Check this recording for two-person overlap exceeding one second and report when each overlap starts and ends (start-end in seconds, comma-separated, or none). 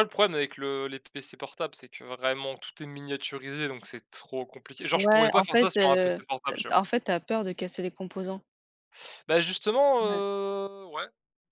4.9-6.8